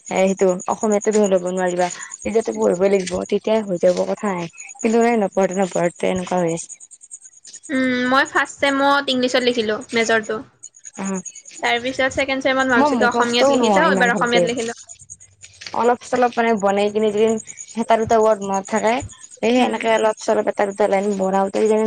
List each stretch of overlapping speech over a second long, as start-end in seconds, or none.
12.8-14.4